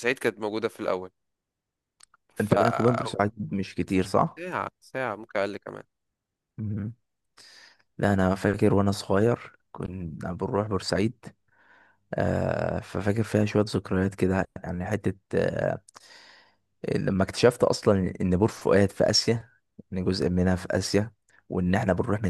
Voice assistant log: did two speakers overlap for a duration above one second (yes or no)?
no